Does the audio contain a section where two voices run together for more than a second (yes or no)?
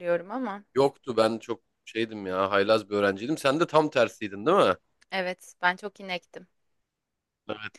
no